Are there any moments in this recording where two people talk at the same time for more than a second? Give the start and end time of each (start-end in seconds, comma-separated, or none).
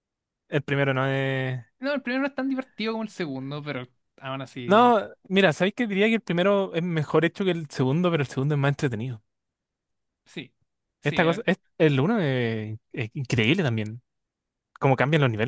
none